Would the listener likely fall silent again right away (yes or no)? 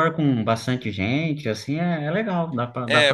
no